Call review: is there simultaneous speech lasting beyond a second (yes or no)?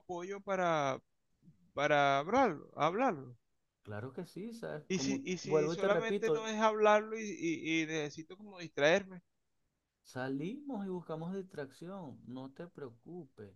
yes